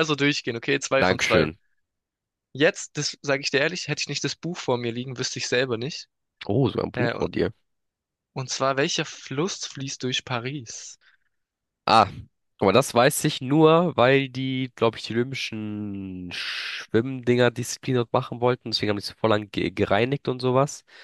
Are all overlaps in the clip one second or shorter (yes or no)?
yes